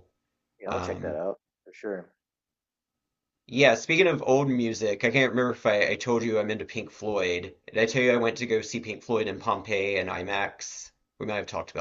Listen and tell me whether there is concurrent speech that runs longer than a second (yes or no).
no